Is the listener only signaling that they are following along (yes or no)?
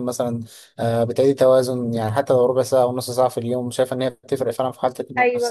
no